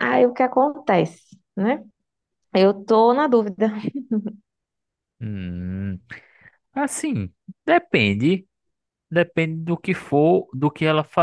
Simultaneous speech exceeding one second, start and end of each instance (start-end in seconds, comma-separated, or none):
none